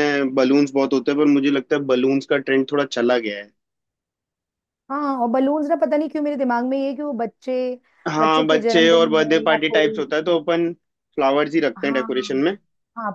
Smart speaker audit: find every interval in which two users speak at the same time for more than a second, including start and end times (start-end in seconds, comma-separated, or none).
8.2-10.0